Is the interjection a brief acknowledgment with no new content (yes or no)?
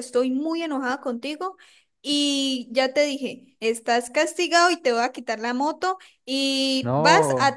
yes